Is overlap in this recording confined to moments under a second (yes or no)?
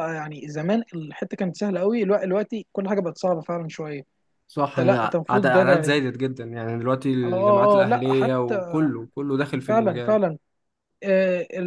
no